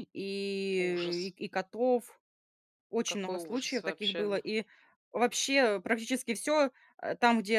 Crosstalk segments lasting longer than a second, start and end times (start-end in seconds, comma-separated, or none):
3.0-4.4